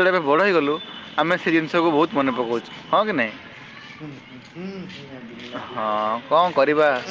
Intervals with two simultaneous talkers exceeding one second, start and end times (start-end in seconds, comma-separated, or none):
none